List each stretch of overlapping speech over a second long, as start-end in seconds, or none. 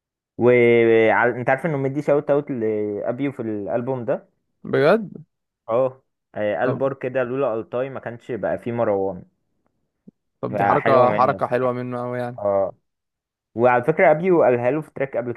10.5-11.7